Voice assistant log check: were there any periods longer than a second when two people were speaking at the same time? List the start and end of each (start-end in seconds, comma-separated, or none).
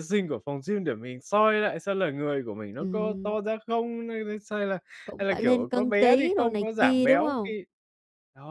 5.2-7.5